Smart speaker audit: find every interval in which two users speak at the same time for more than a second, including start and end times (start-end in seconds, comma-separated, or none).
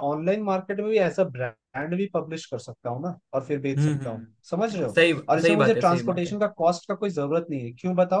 3.6-6.4